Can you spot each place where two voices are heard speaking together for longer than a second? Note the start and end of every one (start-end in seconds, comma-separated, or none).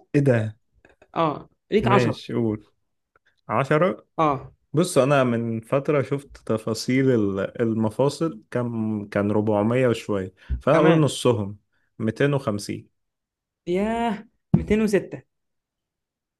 none